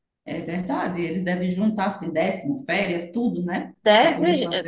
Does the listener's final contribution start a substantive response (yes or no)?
yes